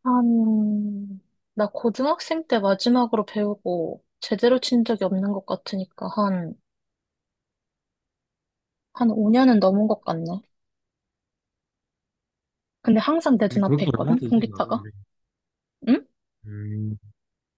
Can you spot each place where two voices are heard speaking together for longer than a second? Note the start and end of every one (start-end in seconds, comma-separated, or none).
13.5-14.9